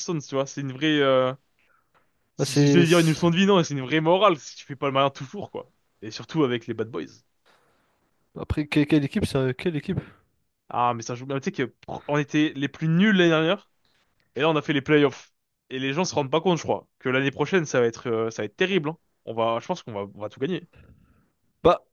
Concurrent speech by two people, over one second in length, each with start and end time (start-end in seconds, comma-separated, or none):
none